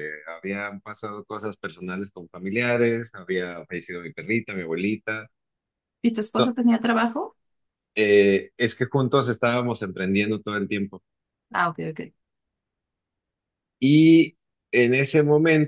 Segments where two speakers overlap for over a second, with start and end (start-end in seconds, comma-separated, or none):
none